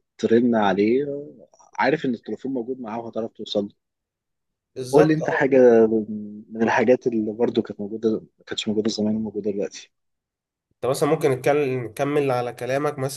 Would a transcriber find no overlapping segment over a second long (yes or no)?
yes